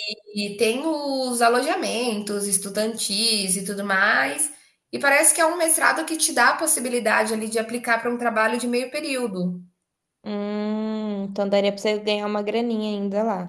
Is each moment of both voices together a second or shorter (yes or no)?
yes